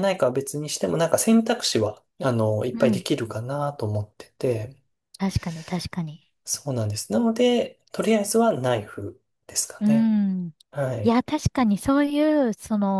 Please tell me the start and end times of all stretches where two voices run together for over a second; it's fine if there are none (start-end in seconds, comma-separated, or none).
none